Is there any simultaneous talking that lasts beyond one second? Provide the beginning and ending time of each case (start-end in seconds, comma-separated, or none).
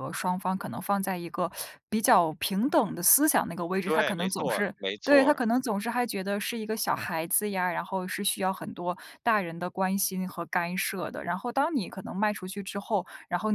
3.8-5.4